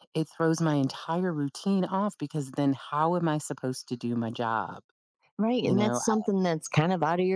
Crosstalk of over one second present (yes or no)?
no